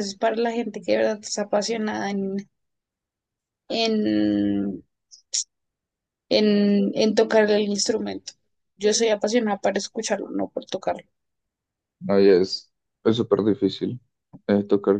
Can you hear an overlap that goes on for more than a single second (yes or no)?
no